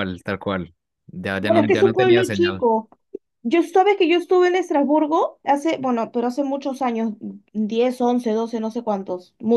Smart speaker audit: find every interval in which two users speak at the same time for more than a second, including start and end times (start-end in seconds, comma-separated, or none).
1.4-2.7